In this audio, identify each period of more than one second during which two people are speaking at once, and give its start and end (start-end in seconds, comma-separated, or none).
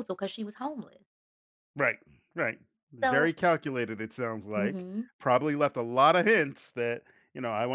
none